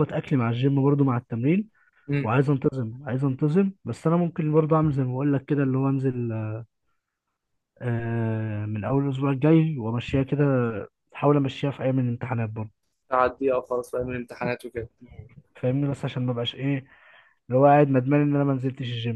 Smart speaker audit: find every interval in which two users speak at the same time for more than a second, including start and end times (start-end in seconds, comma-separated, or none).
none